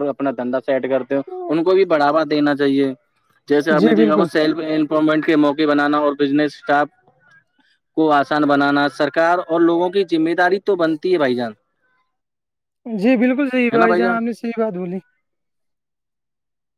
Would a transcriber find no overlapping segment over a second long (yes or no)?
yes